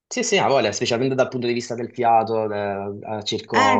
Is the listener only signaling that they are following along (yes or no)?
yes